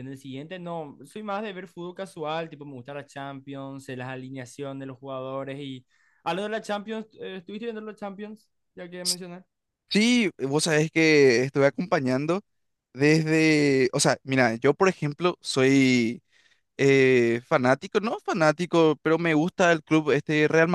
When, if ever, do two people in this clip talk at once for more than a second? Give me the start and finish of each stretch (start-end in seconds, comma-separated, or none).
none